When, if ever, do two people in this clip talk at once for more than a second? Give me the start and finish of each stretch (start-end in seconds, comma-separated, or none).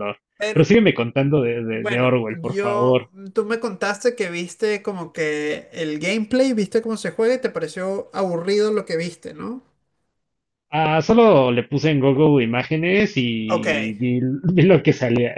1.7-3.1